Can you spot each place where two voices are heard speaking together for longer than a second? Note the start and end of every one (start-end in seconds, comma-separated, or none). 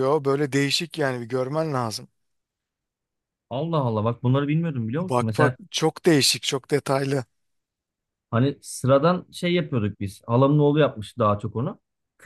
none